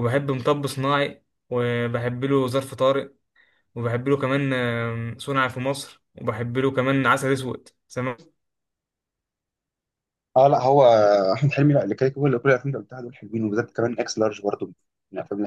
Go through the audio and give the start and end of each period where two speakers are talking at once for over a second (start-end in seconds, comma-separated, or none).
none